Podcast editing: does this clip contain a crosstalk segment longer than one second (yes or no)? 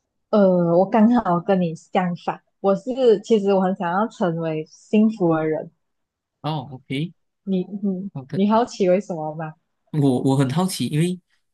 no